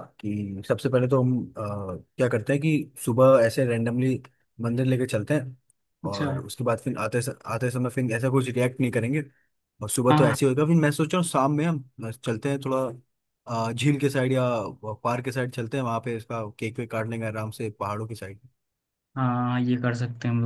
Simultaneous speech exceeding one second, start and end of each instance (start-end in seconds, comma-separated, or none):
none